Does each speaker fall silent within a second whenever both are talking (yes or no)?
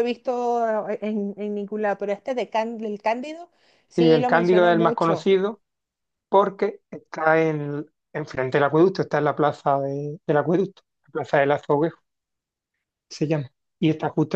no